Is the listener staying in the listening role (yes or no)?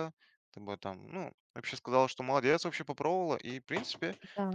yes